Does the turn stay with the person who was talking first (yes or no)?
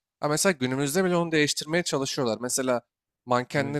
yes